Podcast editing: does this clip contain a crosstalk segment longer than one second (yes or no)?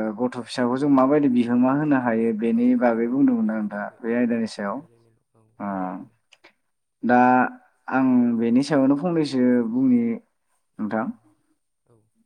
yes